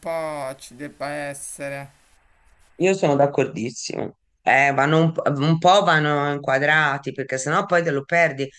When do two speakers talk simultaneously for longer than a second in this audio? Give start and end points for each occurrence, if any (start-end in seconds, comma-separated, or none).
none